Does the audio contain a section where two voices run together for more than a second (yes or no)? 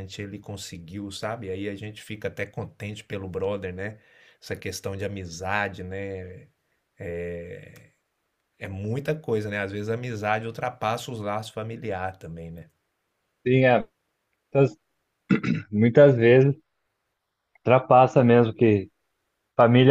no